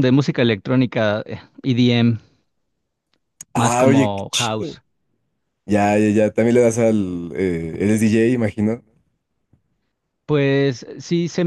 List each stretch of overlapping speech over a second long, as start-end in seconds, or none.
3.5-4.8